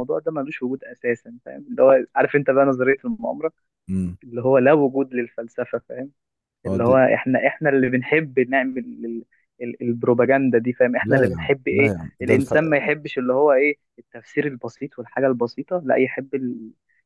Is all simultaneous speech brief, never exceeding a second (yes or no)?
no